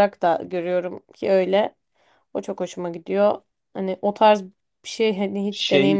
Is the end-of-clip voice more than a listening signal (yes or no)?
yes